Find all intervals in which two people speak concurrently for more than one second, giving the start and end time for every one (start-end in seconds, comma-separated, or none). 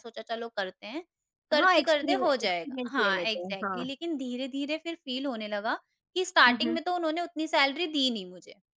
1.5-3.9